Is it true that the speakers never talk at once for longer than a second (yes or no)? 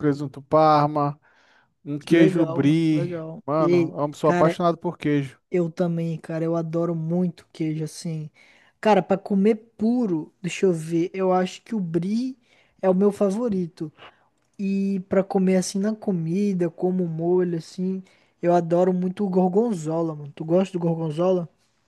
no